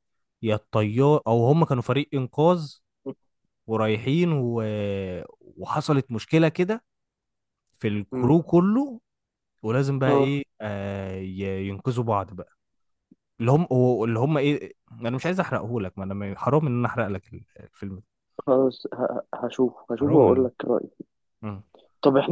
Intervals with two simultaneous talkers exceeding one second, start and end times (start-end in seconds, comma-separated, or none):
none